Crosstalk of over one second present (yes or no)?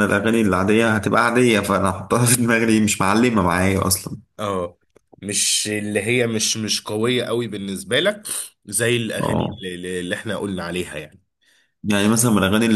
no